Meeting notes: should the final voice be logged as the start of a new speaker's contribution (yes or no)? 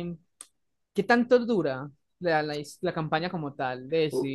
yes